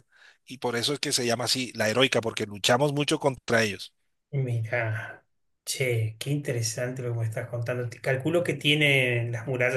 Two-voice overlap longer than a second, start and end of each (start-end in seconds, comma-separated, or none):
none